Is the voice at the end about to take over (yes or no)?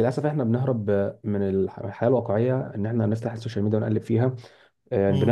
no